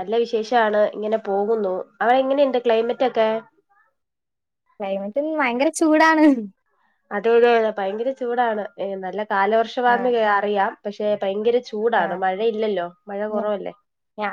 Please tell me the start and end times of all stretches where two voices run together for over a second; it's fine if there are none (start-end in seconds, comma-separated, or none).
none